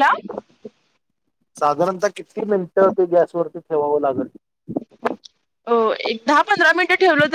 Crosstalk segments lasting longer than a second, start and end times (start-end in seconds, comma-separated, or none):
none